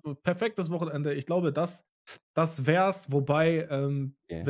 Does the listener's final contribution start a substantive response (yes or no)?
no